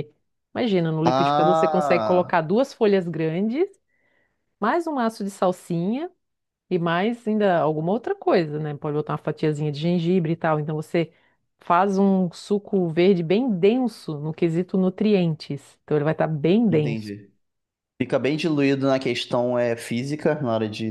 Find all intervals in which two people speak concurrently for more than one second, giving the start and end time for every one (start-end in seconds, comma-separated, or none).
1.1-2.4